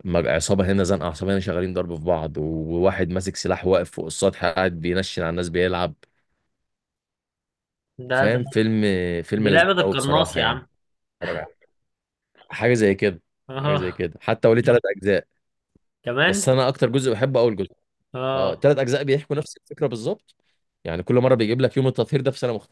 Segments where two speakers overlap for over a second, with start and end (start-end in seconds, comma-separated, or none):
9.4-10.6